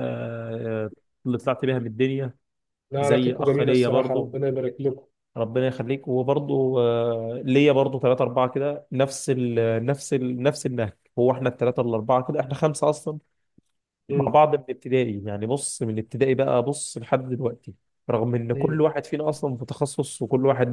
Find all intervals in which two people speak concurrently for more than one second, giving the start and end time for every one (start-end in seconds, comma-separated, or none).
3.0-4.4